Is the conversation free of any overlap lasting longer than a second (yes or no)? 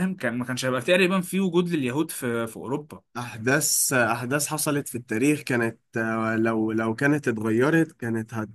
yes